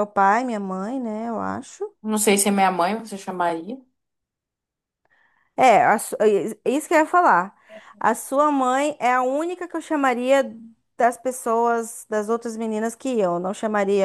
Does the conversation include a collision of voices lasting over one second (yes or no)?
no